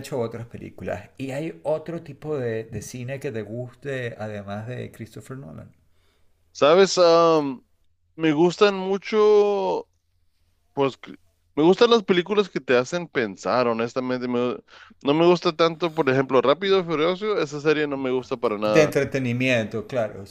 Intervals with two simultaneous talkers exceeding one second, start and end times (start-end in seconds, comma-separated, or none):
none